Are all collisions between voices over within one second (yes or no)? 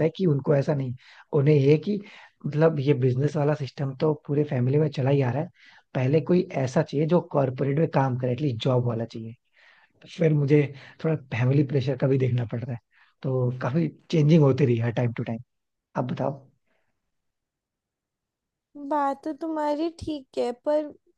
yes